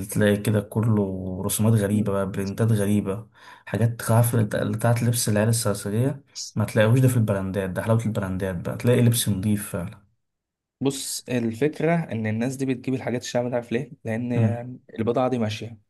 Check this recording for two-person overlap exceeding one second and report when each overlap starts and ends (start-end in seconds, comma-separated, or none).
none